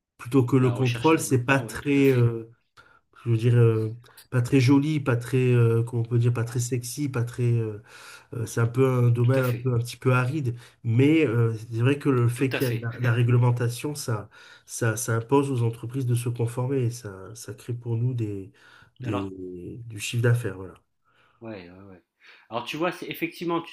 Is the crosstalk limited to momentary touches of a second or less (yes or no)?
no